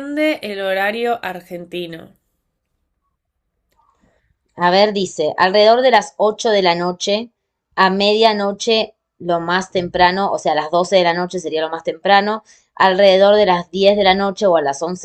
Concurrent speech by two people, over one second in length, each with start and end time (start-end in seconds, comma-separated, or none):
none